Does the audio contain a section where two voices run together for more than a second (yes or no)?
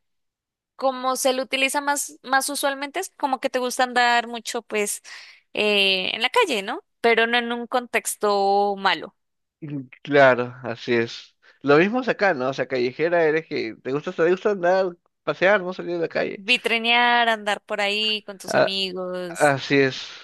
no